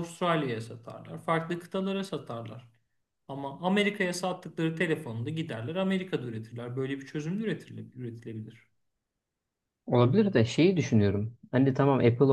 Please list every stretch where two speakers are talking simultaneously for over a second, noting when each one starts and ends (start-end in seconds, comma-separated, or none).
none